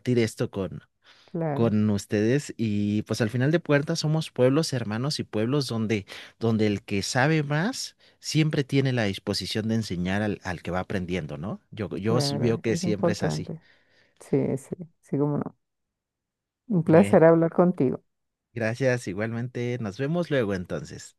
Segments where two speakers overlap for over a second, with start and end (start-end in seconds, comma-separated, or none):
12.0-13.5